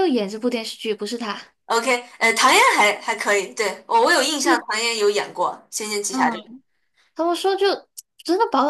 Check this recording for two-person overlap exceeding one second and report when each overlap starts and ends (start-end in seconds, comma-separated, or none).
none